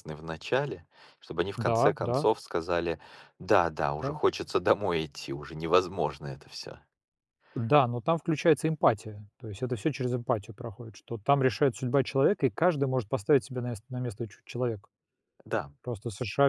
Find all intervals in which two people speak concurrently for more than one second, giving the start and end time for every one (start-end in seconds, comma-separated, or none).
none